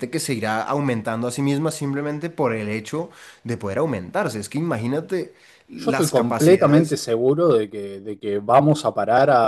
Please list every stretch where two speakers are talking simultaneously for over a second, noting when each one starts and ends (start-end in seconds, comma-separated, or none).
5.8-7.0